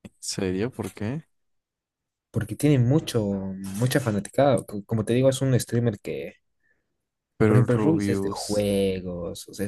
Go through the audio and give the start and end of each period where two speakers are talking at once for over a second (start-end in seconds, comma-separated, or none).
7.5-8.7